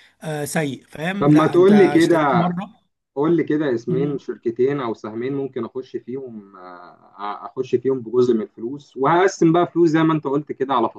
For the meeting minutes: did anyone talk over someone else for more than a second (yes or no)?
yes